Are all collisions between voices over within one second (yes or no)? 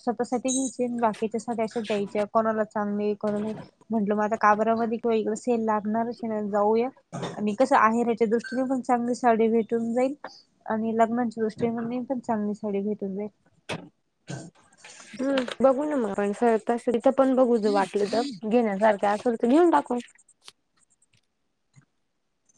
yes